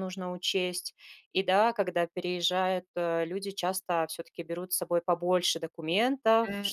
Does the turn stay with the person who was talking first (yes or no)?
yes